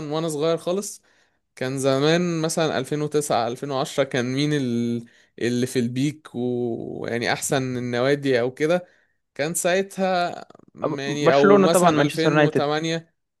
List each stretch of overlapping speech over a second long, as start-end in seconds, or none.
10.8-12.7